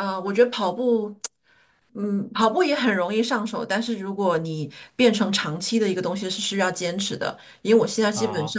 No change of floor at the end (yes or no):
yes